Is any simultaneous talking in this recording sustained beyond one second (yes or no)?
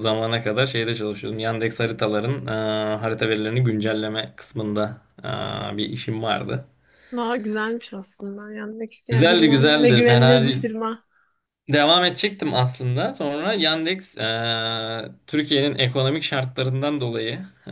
yes